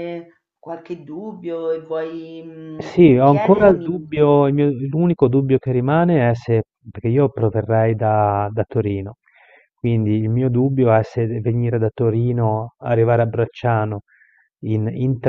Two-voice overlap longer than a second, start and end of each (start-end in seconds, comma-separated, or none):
2.8-4.0